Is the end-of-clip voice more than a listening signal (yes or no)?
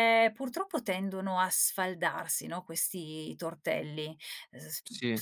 no